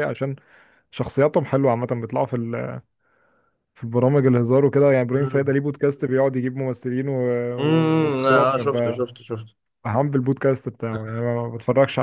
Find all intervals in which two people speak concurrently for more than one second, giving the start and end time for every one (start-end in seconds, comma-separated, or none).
7.6-9.0